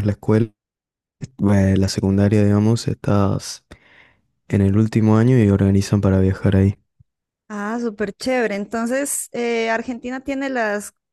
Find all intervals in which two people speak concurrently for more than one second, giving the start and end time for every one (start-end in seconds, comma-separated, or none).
none